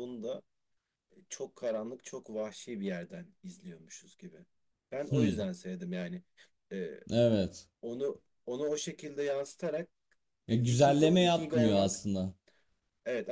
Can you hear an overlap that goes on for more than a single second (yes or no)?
yes